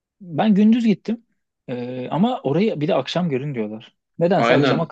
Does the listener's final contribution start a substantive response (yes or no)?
no